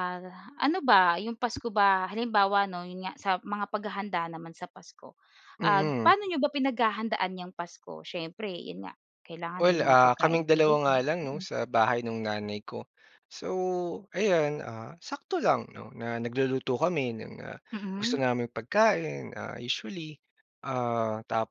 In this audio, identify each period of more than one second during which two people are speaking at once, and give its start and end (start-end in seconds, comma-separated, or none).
9.6-11.4